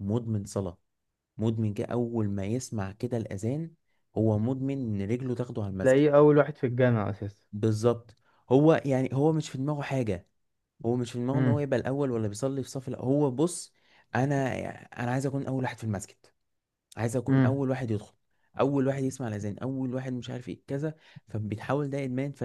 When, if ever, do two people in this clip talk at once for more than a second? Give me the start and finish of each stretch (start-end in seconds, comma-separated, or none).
none